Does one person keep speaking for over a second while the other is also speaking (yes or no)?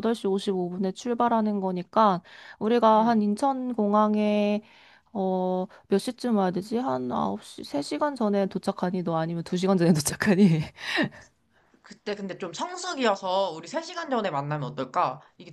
no